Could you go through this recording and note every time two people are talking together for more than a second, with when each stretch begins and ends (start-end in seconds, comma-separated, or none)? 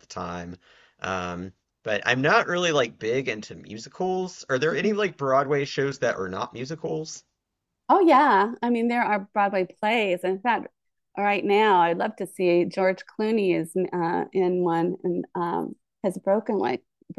none